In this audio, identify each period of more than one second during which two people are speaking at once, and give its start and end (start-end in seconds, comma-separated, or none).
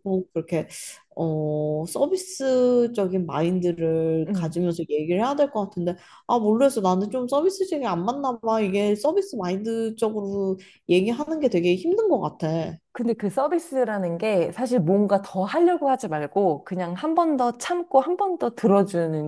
none